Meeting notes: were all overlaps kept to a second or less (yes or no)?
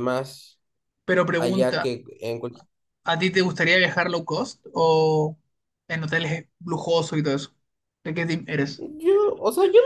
yes